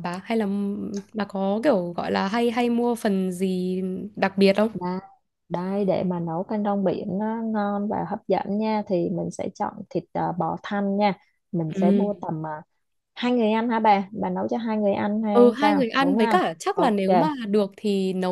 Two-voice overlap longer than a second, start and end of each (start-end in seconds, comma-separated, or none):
15.3-16.9